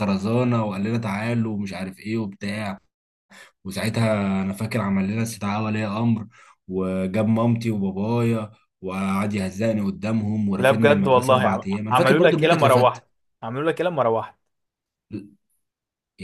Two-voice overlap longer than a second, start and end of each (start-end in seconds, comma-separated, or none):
10.6-13.0